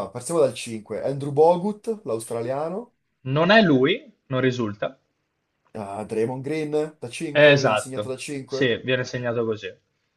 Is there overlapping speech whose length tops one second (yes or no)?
yes